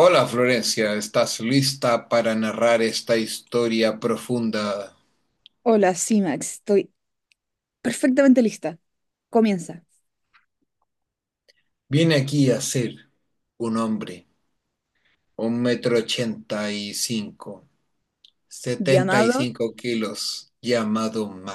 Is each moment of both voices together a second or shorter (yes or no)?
yes